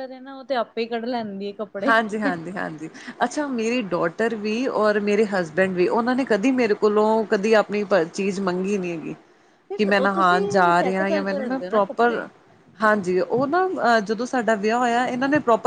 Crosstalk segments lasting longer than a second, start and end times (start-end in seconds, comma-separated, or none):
10.0-12.2